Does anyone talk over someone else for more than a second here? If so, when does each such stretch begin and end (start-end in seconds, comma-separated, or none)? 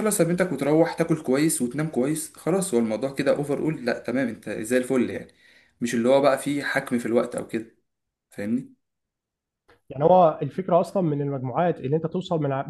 none